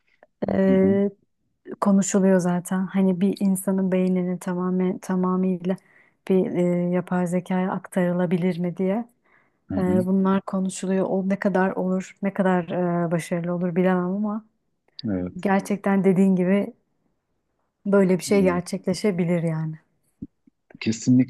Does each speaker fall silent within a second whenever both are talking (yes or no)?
yes